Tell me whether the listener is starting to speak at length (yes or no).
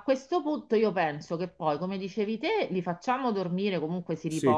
no